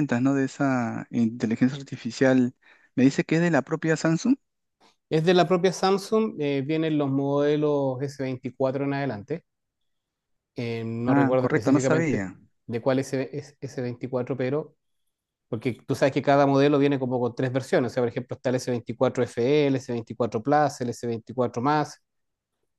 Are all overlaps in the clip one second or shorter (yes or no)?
no